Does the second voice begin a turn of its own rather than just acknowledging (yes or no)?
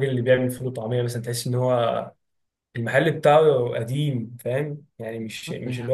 no